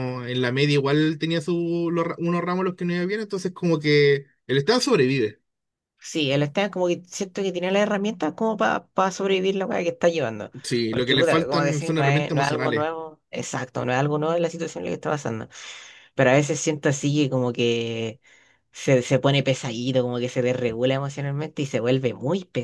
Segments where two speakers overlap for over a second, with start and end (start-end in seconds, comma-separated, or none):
10.9-12.9